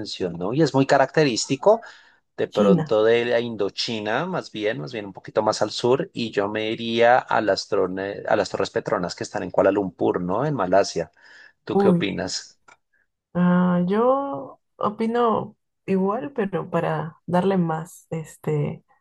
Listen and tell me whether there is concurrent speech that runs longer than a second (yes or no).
no